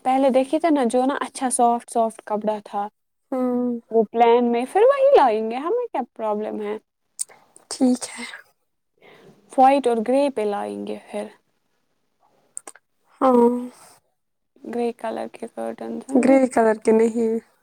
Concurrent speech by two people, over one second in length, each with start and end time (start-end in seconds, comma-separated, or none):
none